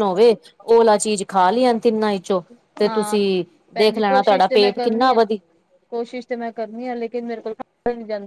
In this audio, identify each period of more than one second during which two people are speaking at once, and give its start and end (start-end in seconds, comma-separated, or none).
3.8-5.2